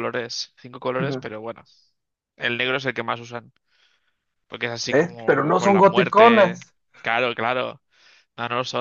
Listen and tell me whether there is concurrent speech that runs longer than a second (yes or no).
yes